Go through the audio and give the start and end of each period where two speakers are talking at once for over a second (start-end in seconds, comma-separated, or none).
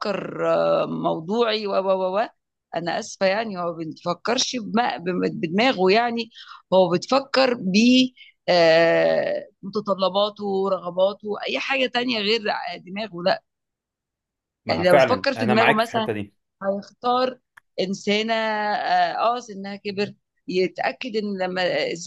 14.7-16.1